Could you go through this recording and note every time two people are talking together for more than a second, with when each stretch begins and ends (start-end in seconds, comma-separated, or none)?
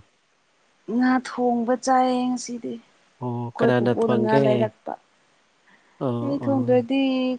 3.2-4.7